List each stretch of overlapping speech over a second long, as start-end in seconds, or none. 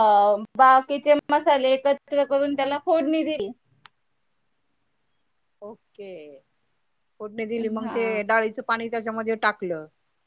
none